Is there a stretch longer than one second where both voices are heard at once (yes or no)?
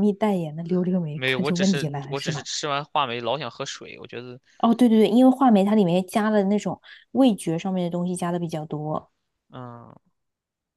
yes